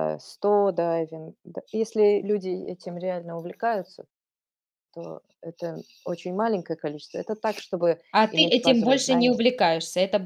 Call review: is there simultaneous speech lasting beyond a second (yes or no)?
yes